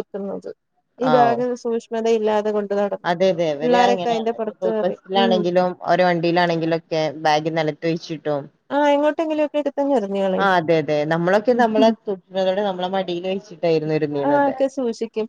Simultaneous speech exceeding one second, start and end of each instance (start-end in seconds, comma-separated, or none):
3.6-5.4